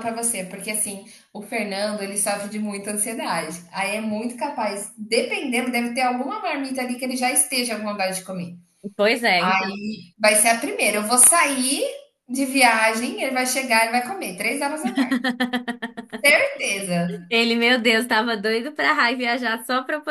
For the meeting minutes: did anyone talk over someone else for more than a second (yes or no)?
no